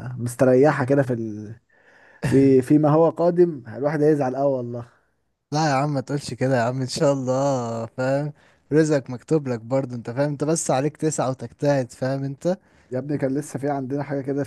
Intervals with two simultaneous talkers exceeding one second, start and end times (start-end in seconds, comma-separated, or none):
none